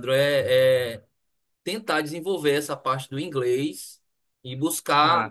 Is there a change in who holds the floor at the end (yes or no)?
no